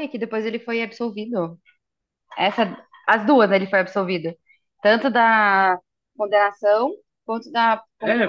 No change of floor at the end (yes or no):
no